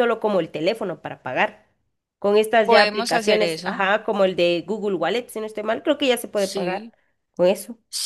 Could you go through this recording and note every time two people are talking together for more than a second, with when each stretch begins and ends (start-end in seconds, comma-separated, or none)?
2.6-3.8